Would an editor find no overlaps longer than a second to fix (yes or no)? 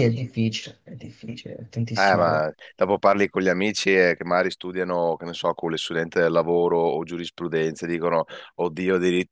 yes